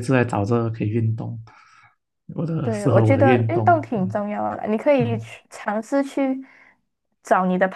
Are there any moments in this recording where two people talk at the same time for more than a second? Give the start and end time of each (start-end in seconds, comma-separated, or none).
2.6-4.2